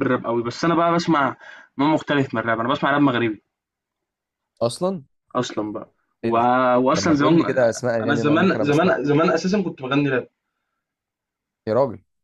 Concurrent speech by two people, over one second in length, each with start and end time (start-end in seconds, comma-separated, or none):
6.9-9.2